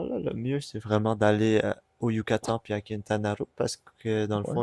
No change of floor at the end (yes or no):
yes